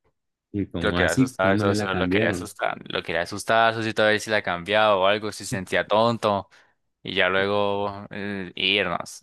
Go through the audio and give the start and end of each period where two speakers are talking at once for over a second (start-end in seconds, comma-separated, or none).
0.8-2.5